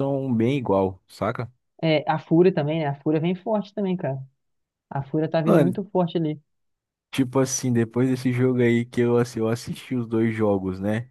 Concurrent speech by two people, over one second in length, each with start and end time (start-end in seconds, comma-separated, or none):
none